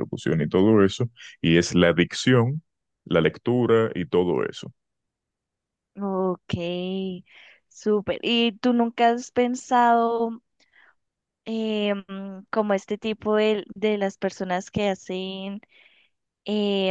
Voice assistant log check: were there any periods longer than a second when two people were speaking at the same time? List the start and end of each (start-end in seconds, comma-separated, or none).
none